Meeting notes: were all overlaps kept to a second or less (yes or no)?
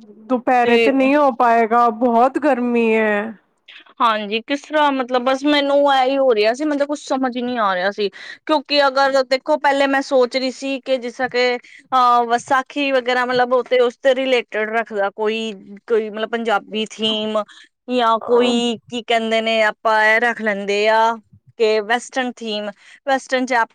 yes